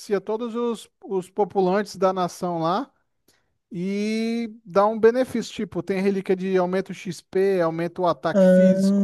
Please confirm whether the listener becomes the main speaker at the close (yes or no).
yes